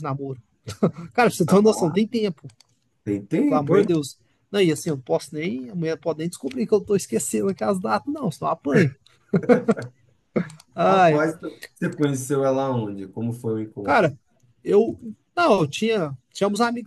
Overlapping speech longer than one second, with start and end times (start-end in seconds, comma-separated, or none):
none